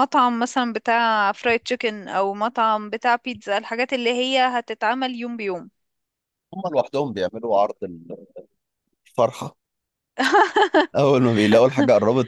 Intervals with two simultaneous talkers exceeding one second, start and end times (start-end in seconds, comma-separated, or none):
none